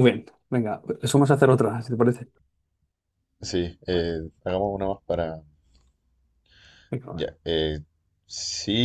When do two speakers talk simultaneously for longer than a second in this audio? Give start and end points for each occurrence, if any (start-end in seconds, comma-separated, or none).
none